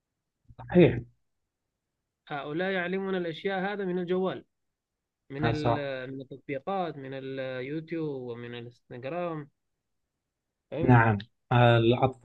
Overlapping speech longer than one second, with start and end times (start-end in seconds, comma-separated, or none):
none